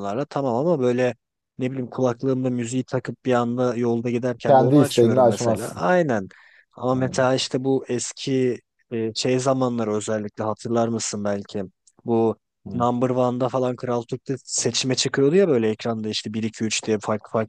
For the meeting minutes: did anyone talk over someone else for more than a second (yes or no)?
yes